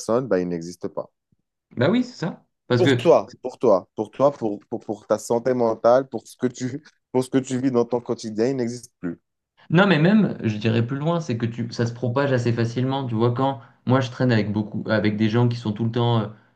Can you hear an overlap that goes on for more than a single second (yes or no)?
no